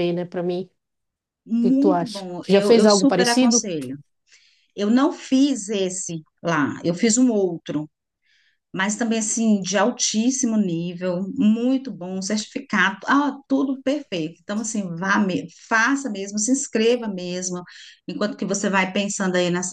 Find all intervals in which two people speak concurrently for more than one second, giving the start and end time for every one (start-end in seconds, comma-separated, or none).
1.6-3.6